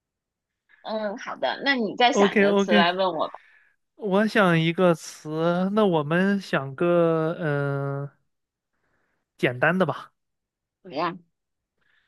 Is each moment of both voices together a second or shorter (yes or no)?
yes